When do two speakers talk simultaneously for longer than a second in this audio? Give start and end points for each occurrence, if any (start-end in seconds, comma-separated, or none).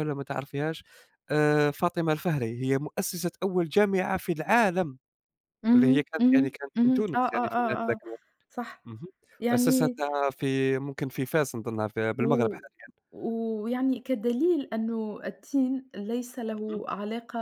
5.7-8.0